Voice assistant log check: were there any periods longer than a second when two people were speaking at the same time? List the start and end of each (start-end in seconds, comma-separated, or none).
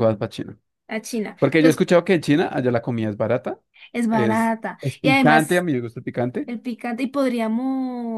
4.1-5.7